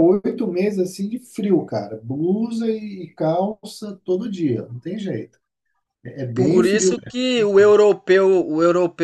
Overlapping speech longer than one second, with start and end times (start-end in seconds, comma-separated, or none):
none